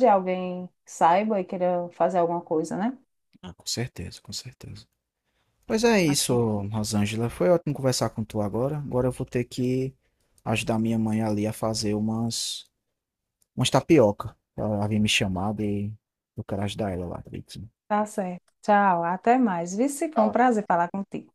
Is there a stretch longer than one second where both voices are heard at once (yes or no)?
no